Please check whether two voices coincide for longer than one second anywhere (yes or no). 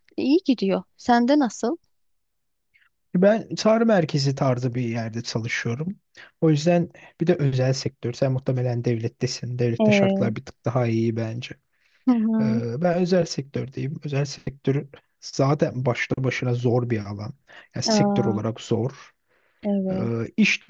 no